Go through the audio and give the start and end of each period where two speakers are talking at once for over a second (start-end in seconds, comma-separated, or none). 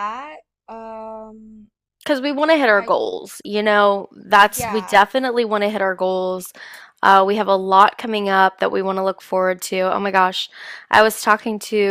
none